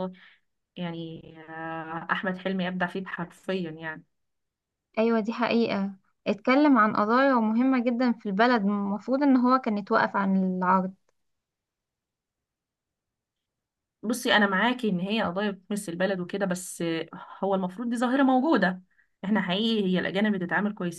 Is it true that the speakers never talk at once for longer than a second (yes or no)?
yes